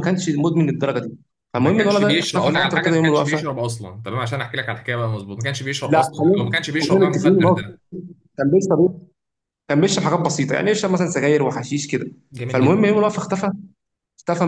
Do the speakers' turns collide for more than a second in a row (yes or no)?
yes